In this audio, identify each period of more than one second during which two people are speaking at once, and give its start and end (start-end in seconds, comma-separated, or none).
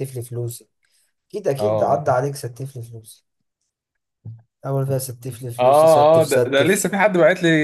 5.5-6.9